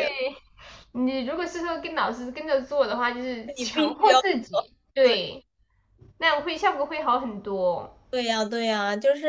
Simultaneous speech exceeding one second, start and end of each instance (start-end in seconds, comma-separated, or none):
3.6-5.2